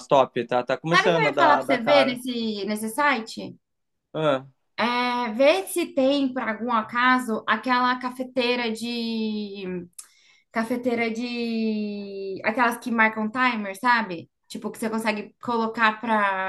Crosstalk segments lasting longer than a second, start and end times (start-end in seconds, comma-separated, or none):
0.9-2.2